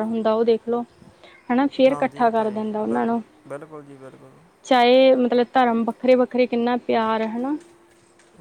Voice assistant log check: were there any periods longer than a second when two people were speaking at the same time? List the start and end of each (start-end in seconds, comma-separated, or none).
1.9-3.2